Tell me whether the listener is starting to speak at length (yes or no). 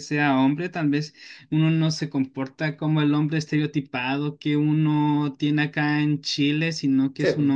no